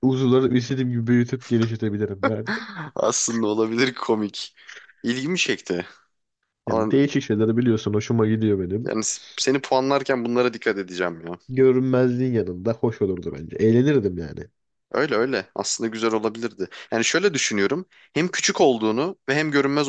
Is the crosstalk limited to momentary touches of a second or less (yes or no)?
yes